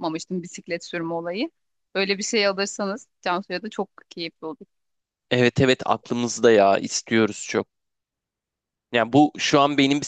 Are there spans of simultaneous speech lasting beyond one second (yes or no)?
no